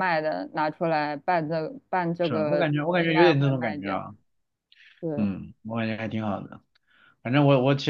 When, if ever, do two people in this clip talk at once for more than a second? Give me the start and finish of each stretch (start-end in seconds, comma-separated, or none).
2.2-4.0